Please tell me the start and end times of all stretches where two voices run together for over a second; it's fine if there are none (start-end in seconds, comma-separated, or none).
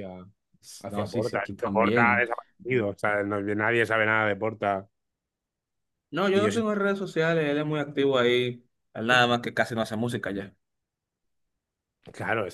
0.9-2.3